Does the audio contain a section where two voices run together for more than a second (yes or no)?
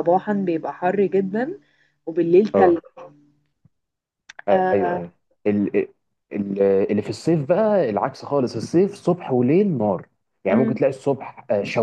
no